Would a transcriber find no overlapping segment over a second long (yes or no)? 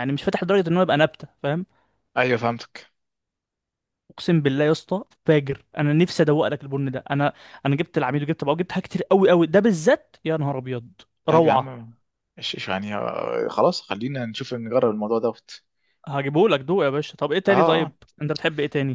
yes